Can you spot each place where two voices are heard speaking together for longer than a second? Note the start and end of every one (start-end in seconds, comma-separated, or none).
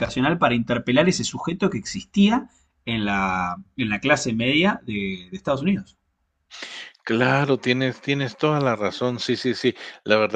none